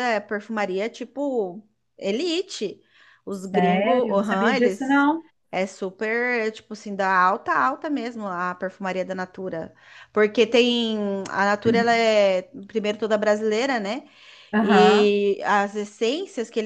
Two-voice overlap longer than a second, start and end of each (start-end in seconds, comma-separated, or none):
3.3-5.1